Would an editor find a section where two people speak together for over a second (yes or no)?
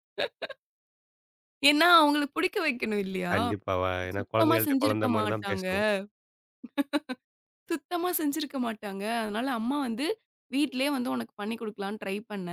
yes